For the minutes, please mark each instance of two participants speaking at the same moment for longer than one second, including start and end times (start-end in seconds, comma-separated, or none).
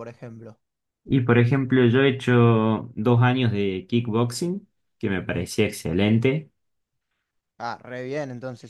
none